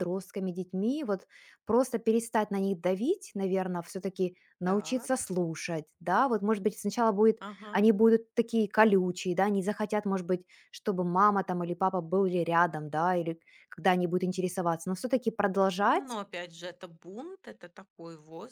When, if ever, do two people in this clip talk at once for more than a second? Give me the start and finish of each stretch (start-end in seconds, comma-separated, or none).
none